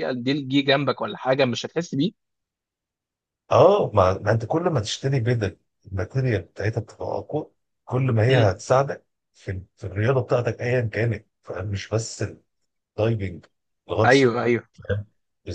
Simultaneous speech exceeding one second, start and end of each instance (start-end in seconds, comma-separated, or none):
none